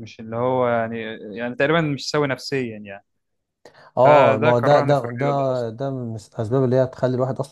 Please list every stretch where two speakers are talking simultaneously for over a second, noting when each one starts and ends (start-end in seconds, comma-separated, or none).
4.0-5.7